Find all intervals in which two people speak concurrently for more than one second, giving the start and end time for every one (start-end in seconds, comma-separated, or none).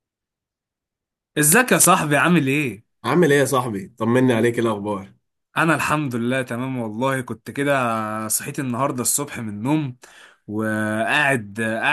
none